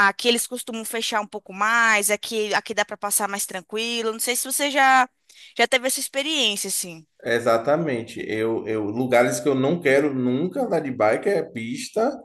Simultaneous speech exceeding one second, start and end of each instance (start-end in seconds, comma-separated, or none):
none